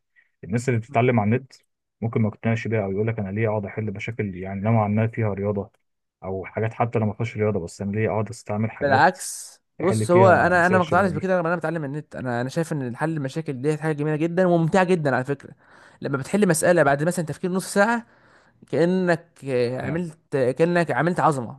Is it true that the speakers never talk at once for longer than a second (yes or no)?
no